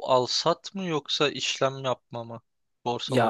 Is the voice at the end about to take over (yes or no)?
yes